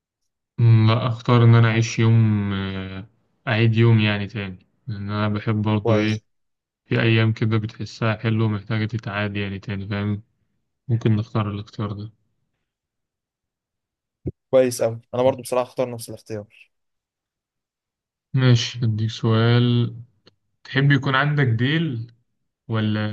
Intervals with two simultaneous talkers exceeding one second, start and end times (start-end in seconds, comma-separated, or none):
none